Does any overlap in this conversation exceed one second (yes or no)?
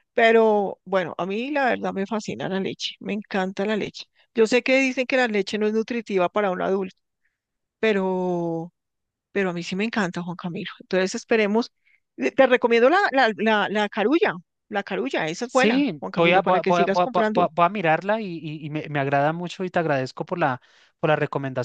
yes